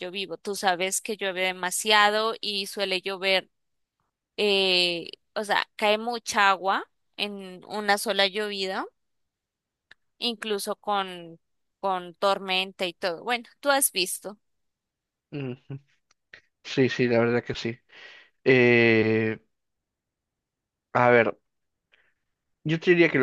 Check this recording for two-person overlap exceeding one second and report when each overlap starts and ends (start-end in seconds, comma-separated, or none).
none